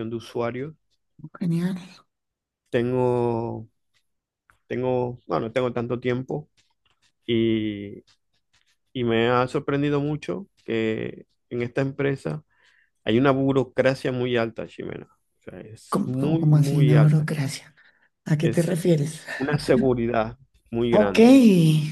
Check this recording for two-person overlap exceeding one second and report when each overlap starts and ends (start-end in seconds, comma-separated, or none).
15.9-17.3